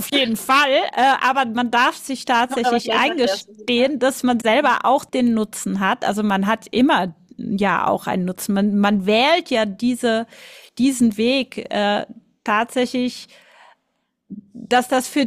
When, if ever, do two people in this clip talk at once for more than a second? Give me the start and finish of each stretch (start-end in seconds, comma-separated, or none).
2.5-3.9